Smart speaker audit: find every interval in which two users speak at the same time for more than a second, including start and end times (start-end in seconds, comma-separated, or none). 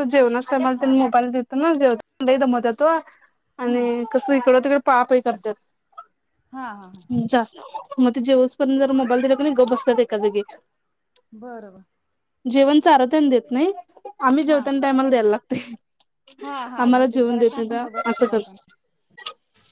16.8-18.4